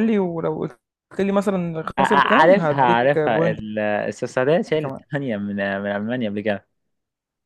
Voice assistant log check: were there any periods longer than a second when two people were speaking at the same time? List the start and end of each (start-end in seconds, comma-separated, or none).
2.0-3.6